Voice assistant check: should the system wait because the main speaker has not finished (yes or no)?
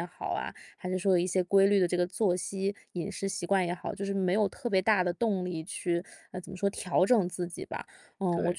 yes